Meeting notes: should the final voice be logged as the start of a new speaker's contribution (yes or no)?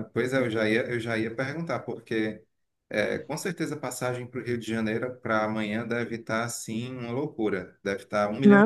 yes